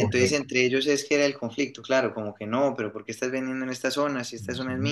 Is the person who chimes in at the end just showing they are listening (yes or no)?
no